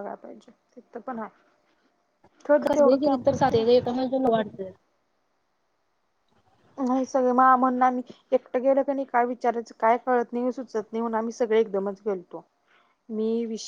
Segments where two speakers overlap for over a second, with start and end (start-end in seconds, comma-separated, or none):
2.8-4.2